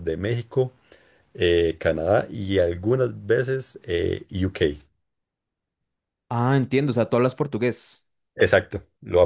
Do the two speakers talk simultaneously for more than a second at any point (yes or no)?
no